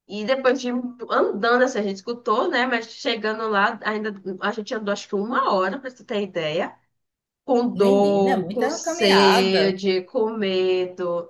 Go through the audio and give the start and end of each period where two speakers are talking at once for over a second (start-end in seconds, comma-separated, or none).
7.8-9.8